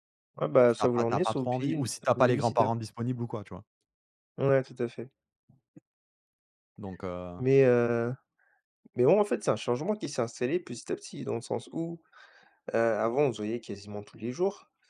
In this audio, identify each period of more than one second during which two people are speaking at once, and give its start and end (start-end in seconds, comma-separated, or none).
0.7-2.4